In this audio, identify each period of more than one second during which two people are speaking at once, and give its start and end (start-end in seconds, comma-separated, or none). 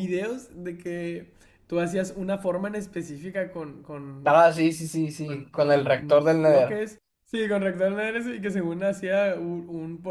5.2-6.8